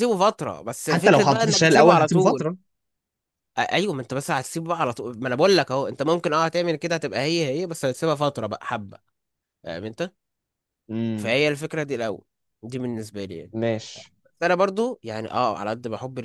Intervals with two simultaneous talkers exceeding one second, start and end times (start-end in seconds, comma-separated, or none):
0.9-2.5